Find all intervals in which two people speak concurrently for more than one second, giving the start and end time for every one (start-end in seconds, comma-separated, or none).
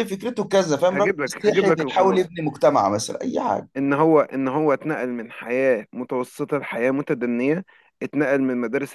0.9-2.3